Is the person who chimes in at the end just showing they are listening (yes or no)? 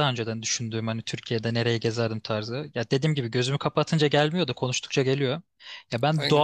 yes